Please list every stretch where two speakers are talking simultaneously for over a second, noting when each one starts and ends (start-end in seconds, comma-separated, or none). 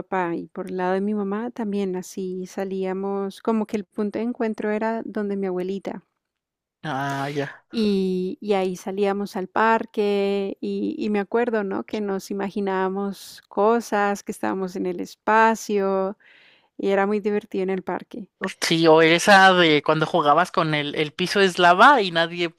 none